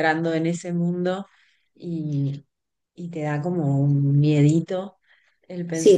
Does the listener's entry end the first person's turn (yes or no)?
yes